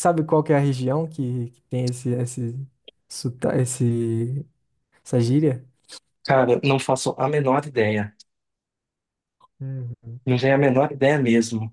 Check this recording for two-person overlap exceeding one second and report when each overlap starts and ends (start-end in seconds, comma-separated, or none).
none